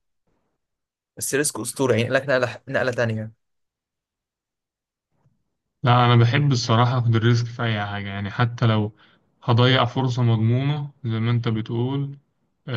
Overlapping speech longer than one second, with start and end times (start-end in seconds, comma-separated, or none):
none